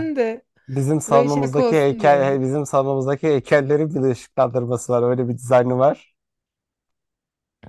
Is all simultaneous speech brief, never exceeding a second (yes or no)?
no